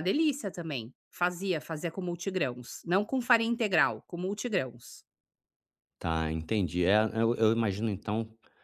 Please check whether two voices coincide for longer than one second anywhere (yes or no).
no